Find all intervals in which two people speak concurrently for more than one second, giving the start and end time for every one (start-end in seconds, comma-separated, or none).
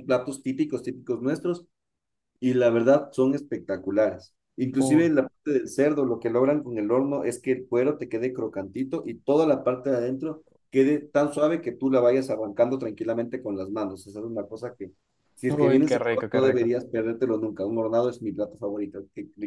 15.5-16.7